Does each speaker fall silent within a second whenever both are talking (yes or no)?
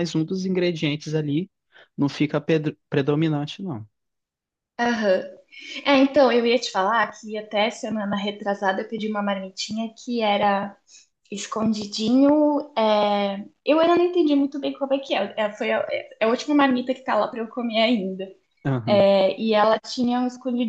yes